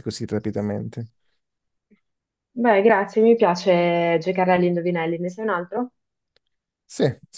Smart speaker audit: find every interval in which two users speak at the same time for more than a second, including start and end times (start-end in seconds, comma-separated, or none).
none